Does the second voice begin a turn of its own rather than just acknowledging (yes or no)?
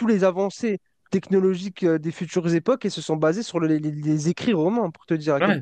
yes